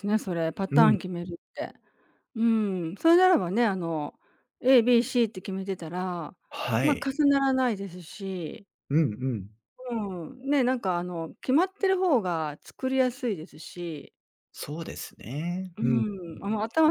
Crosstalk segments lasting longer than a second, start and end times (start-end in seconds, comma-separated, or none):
none